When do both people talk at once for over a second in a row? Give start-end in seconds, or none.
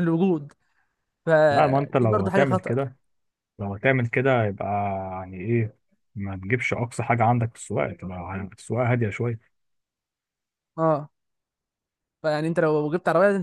1.5-2.9